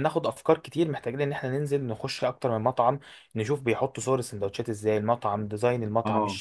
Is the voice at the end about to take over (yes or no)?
yes